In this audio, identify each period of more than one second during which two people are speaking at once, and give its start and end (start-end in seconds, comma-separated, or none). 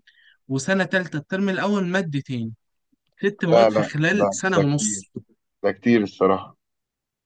3.5-5.1